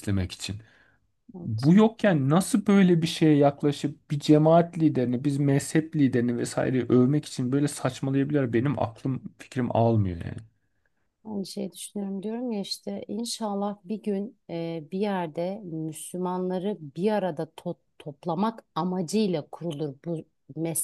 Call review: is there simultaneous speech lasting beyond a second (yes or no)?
no